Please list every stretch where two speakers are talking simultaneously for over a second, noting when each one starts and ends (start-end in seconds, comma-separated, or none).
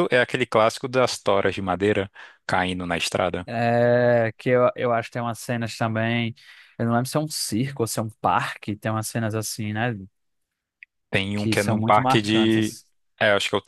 11.3-12.8